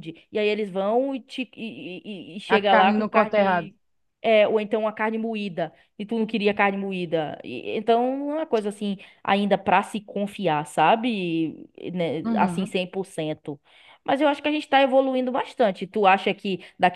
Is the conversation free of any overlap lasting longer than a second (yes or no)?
no